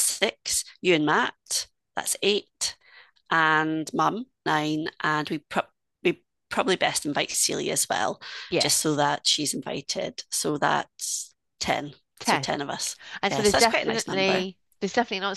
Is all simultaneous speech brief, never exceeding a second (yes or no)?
no